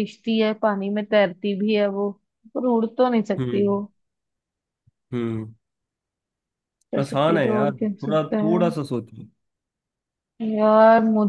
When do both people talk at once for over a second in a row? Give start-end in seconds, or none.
7.0-8.6